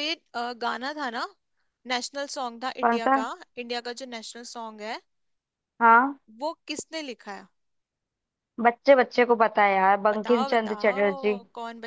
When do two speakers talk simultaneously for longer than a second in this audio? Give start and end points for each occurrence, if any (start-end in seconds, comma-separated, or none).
10.1-11.3